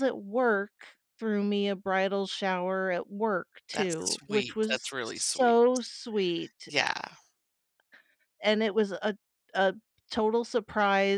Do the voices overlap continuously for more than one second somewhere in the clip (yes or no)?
yes